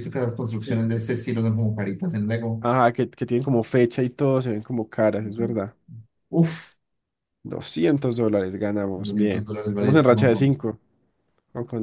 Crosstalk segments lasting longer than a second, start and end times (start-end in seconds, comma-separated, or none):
8.9-10.5